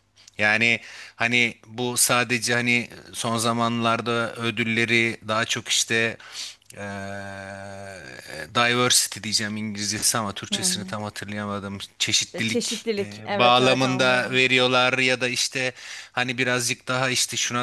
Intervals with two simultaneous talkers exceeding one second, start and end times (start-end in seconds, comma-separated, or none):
12.3-14.4